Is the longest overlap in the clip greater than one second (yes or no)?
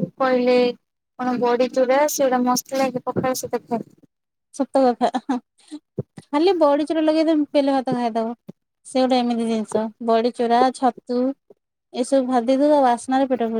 no